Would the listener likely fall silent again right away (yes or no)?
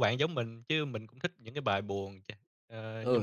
no